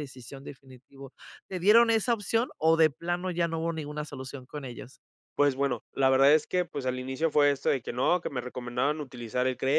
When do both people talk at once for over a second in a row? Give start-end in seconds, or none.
none